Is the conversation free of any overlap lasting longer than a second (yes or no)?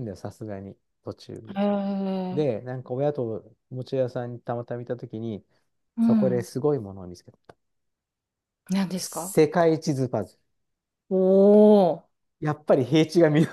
yes